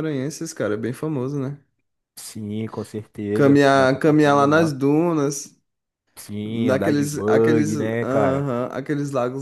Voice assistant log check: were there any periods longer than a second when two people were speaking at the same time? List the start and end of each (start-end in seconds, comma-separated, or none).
3.3-4.7, 6.4-8.5